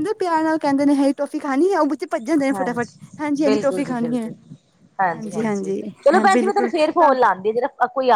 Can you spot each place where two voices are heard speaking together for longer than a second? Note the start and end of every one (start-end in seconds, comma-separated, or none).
2.2-4.3, 5.1-7.1